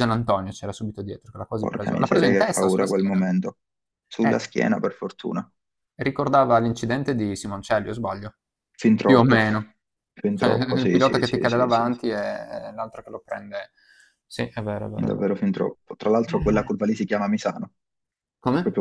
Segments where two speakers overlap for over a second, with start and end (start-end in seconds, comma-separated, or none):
1.6-3.2, 10.3-11.9